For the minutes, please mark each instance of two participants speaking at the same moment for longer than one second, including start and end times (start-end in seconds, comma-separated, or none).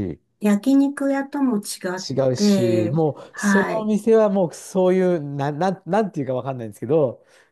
2.1-3.9